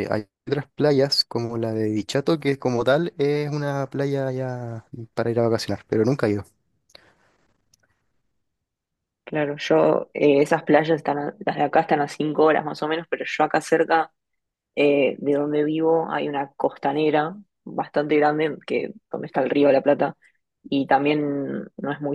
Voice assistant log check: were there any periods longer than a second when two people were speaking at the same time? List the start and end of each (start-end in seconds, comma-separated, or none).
none